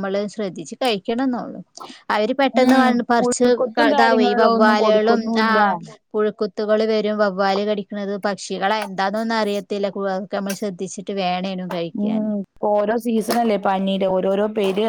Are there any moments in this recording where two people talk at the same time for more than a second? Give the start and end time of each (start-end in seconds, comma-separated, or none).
3.6-5.6